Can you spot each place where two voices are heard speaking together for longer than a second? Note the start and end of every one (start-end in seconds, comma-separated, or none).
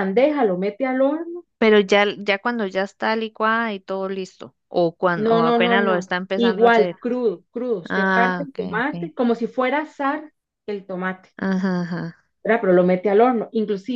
5.2-7.0, 7.9-9.1